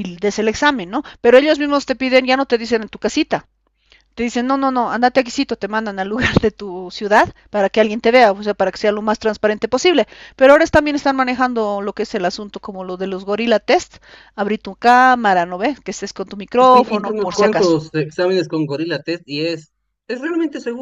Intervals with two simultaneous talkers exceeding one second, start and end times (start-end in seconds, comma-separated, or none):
16.6-17.8